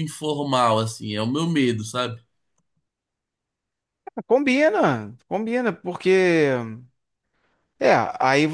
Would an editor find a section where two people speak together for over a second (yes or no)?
no